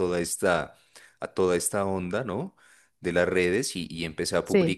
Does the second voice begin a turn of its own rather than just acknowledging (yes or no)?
no